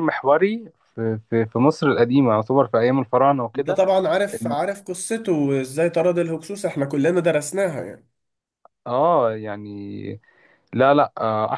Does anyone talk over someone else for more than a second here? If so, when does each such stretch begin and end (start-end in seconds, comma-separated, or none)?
none